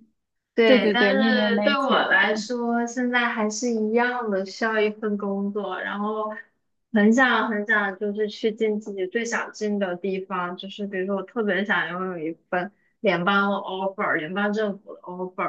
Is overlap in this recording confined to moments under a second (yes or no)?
no